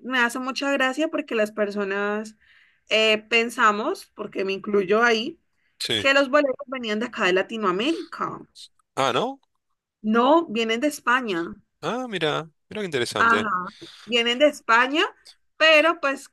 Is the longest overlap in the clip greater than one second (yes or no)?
no